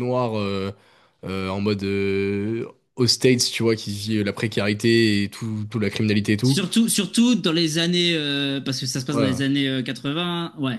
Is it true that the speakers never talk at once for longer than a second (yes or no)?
yes